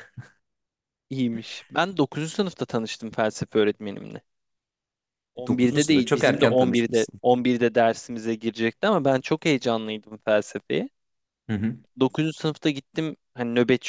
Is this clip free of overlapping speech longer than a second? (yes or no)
no